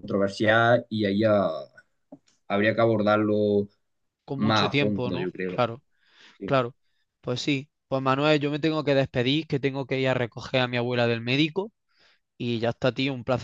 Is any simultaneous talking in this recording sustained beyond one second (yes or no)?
yes